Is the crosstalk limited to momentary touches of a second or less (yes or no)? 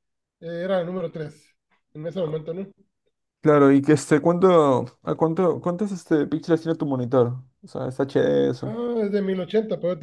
yes